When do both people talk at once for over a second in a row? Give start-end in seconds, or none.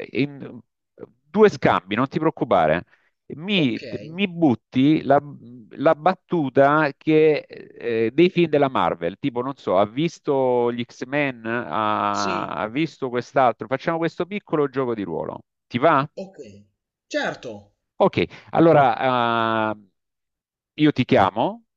none